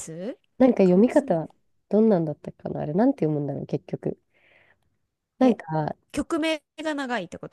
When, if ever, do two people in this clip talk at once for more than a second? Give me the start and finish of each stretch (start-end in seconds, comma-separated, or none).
none